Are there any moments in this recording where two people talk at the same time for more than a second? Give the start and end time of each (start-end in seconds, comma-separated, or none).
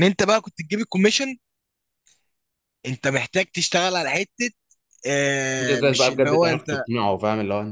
5.6-6.8